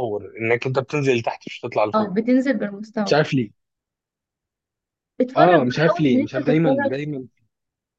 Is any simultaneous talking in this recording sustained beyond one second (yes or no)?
yes